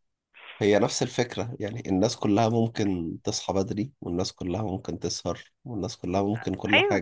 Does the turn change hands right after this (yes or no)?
yes